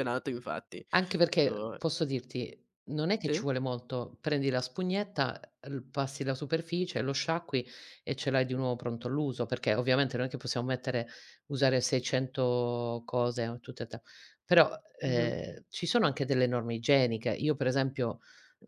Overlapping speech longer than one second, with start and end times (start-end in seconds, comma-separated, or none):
none